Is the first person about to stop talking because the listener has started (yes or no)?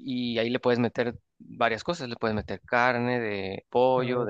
no